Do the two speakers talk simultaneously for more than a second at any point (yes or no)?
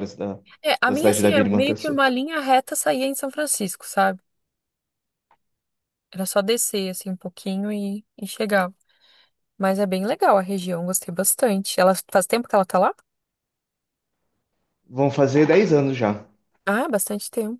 yes